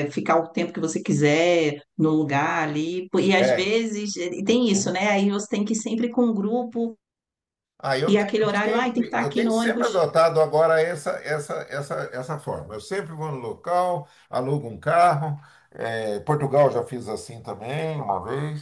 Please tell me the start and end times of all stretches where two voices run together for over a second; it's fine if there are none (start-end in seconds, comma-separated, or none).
8.1-10.1